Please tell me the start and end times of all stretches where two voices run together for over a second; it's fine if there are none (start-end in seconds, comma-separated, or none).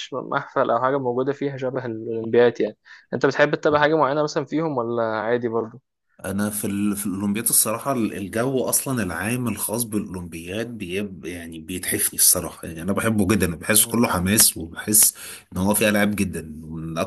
none